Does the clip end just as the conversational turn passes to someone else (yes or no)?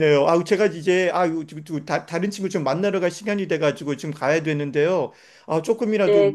no